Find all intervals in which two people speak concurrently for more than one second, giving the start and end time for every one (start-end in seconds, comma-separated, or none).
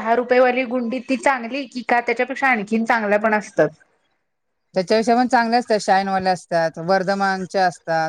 none